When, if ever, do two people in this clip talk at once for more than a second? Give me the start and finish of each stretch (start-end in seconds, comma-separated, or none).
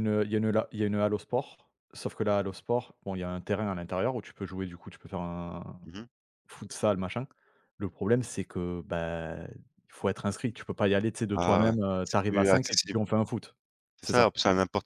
11.3-13.0